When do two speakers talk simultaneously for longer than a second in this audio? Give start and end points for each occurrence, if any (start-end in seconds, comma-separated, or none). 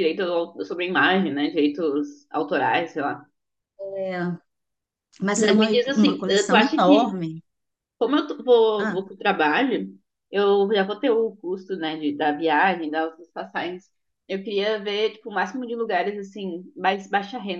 5.4-7.1